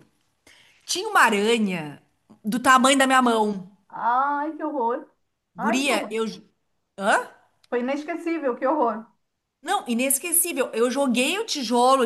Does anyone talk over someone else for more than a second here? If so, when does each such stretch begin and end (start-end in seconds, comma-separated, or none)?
none